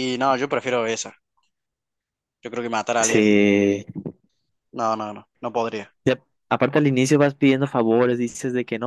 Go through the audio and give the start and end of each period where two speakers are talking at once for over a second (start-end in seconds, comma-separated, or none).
none